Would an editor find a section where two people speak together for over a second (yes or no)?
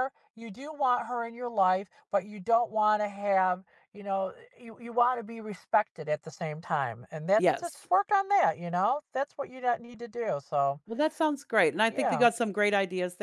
no